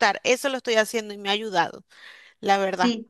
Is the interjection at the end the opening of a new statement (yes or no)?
yes